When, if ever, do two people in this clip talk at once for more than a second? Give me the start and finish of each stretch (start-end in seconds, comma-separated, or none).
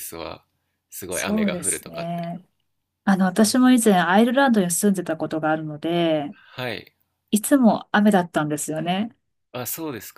1.1-2.3